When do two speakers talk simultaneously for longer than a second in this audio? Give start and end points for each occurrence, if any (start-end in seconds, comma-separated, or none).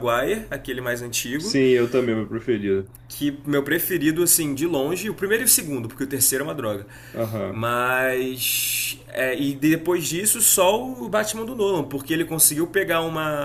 none